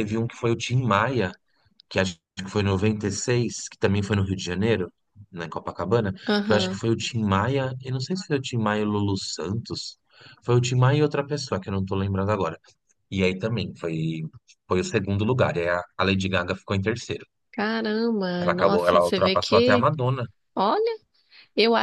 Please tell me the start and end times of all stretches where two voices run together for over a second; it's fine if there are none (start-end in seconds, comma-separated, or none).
18.4-19.9